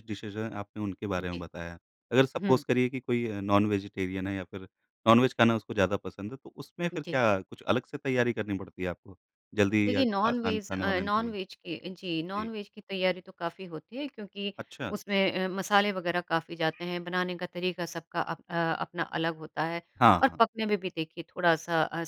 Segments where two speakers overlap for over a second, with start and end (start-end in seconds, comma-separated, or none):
9.8-11.3